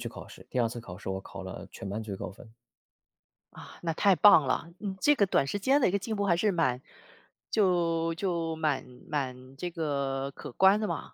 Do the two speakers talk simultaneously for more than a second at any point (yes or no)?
no